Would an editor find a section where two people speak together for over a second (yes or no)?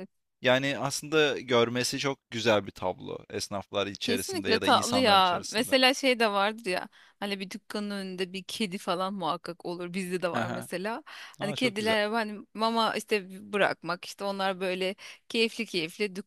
yes